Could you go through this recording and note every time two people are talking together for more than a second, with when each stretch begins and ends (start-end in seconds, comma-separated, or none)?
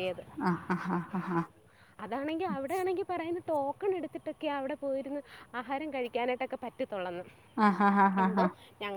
none